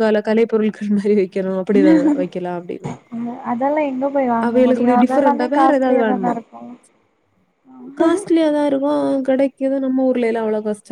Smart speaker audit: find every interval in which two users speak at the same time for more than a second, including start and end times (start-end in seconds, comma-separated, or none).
none